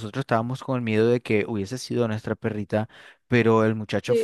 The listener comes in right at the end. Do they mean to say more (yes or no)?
no